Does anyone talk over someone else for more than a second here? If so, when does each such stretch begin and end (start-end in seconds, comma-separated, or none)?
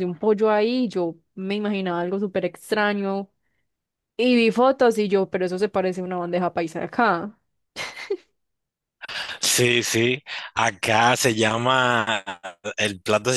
none